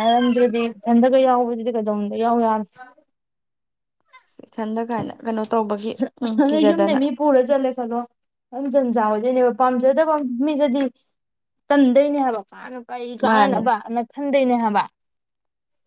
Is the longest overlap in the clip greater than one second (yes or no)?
no